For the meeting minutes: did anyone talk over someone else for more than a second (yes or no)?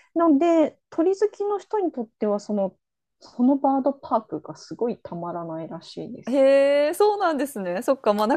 no